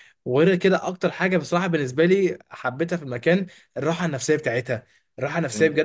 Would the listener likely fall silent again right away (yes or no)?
yes